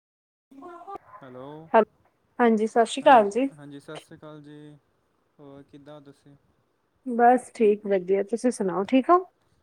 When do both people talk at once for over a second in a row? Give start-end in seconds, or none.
none